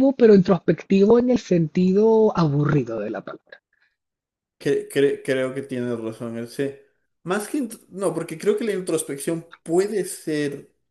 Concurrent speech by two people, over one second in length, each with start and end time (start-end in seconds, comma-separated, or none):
none